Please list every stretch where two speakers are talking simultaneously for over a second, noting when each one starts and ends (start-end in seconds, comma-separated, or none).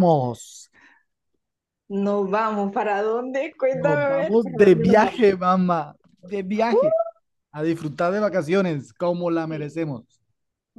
3.7-5.2